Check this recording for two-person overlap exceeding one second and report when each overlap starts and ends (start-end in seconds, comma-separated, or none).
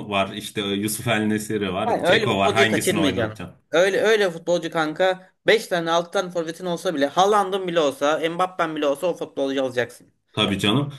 1.9-3.6